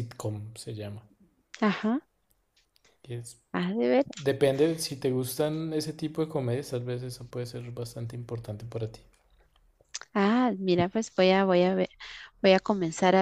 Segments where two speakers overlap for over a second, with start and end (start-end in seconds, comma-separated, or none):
none